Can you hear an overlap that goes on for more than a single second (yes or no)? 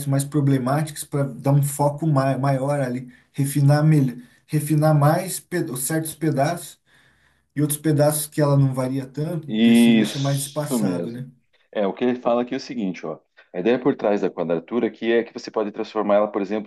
yes